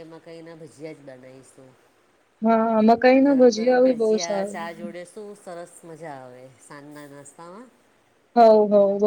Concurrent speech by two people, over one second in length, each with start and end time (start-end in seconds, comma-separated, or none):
3.2-4.9